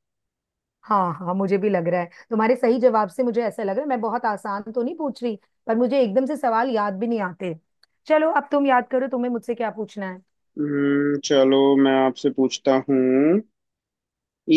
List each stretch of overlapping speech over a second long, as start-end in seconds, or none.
none